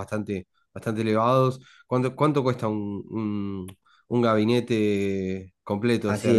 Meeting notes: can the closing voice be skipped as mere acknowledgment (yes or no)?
no